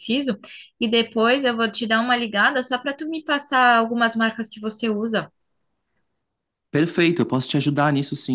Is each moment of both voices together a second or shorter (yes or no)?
yes